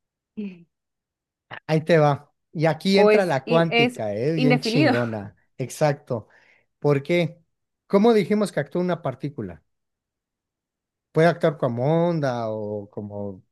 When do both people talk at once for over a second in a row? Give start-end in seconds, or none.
2.9-4.9